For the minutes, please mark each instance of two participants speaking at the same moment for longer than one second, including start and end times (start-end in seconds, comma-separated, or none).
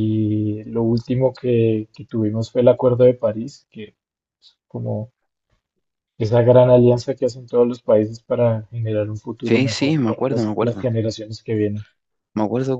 9.4-10.8